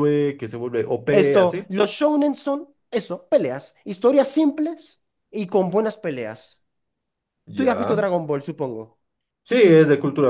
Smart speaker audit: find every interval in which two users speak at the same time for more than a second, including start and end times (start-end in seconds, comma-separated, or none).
none